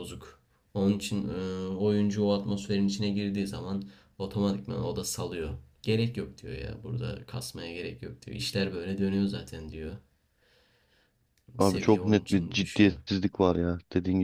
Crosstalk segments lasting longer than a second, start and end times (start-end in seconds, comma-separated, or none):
11.6-13.0